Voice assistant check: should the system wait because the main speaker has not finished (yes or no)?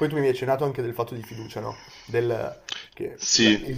yes